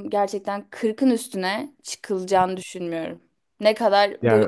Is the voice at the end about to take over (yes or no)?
no